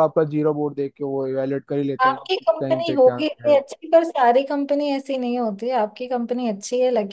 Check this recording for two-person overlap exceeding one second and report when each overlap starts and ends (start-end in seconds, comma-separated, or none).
2.0-3.6